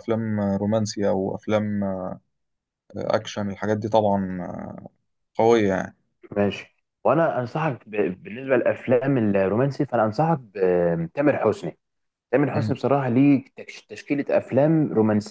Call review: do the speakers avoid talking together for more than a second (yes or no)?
yes